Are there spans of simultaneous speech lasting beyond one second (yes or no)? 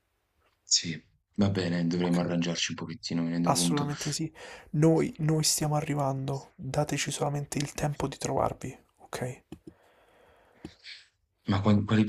no